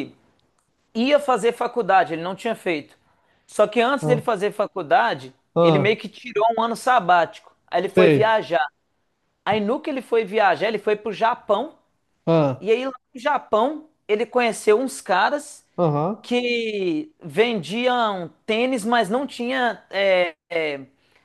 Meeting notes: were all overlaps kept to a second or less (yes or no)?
yes